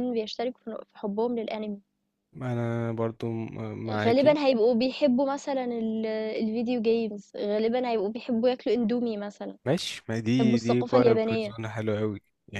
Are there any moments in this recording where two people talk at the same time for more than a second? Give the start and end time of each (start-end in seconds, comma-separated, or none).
10.3-11.6